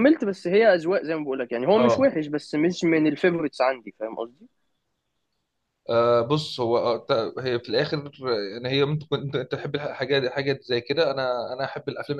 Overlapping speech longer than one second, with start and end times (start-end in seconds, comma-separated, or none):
none